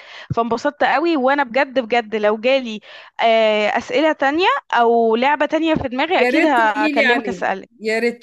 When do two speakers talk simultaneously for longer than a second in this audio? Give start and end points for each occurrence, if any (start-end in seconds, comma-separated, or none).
6.2-7.7